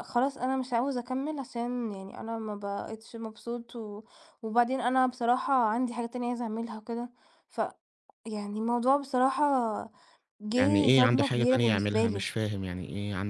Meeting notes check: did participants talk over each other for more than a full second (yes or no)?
yes